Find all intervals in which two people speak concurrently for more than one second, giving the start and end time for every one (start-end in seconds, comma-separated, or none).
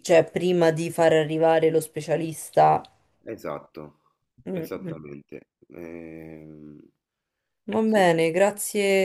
none